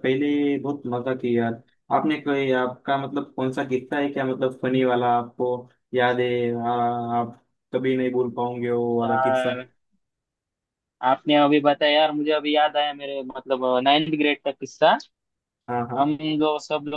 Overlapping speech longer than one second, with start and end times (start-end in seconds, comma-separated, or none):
none